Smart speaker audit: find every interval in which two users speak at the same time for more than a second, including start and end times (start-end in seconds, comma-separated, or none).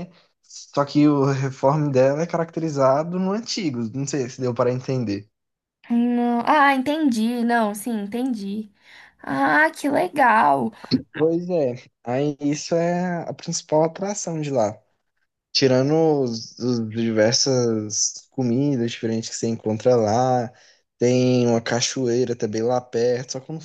none